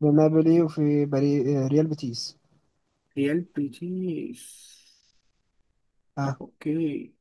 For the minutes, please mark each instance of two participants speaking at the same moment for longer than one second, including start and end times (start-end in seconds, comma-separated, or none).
none